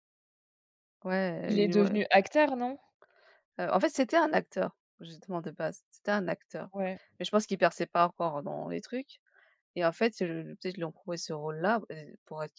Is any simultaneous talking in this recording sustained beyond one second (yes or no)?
no